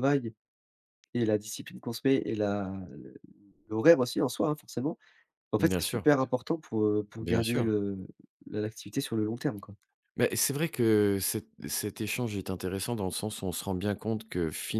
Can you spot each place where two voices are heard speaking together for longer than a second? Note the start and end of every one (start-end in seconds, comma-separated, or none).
none